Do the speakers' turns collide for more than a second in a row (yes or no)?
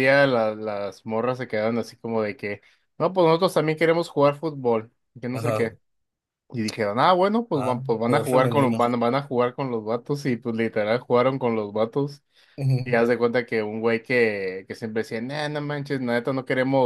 yes